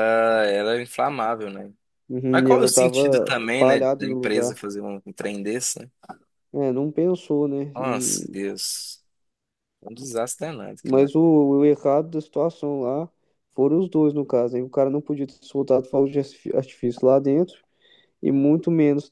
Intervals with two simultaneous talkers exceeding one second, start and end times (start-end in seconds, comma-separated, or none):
2.3-4.6